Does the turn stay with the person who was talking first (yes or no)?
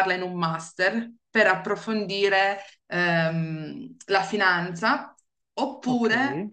yes